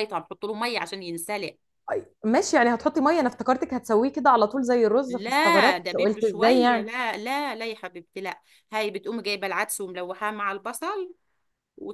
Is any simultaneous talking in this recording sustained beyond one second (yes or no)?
yes